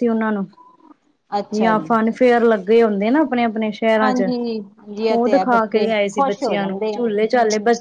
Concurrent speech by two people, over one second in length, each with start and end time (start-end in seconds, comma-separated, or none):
5.1-7.0